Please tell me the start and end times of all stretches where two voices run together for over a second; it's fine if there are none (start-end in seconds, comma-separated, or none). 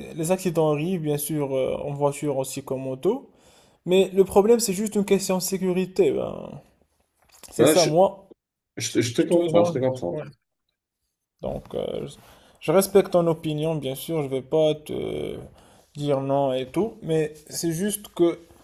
none